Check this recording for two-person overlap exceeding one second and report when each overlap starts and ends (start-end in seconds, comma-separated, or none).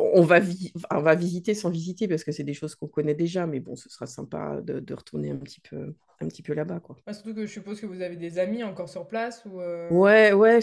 none